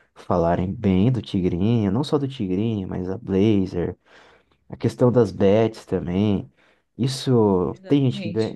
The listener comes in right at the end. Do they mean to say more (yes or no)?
no